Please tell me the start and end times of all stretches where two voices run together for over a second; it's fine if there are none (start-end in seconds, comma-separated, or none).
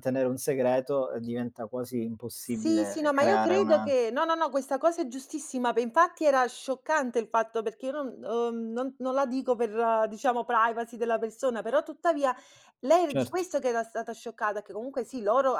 2.4-3.9